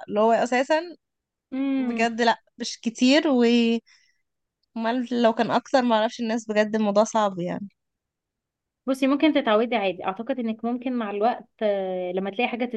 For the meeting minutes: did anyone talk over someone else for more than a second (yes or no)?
no